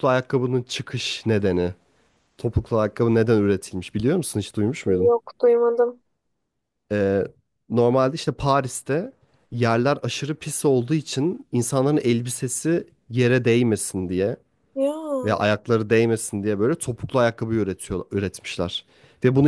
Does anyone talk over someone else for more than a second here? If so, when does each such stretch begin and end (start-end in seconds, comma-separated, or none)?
none